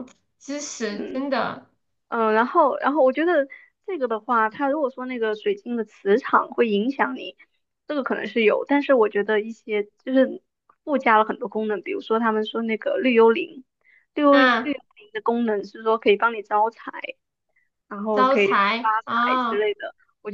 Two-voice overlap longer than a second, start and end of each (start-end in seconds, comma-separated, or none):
18.1-19.7